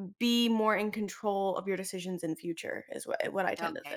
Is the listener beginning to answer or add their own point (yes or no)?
yes